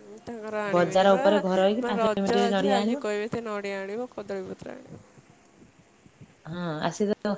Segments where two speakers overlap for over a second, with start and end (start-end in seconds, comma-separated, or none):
0.7-3.0